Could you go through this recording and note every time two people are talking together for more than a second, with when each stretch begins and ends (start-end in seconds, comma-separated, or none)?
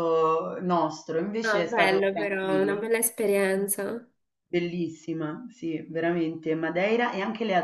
1.4-2.8